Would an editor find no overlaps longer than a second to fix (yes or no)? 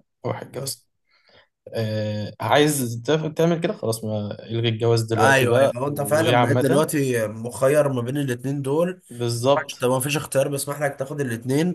no